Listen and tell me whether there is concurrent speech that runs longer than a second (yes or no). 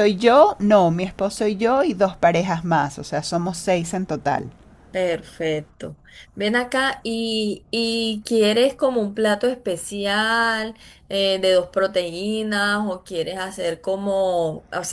no